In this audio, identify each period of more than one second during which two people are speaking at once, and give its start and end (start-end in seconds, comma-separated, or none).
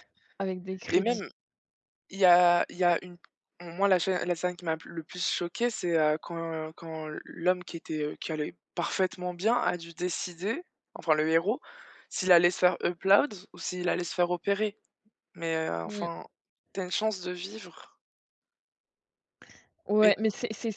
none